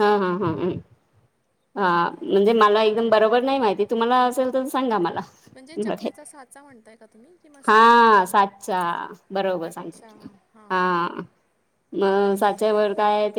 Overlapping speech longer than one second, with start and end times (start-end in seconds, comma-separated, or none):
none